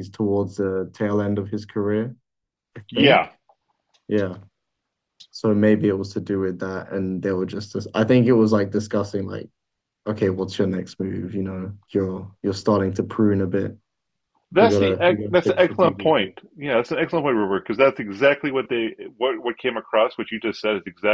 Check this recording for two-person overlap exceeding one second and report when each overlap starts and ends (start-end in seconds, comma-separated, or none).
14.6-16.3